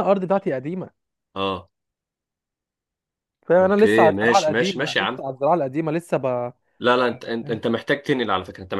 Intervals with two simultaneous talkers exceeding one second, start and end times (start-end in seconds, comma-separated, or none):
3.6-5.2